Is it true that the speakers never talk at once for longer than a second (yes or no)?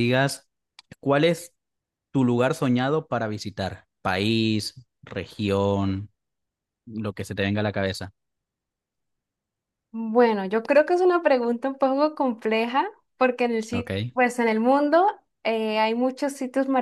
yes